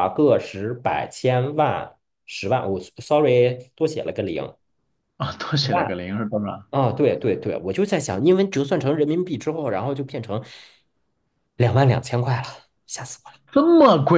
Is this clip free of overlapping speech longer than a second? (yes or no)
yes